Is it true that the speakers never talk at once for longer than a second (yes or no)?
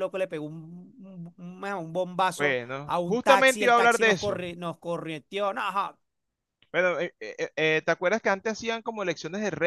no